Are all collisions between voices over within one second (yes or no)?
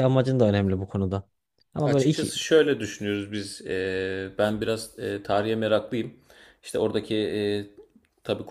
yes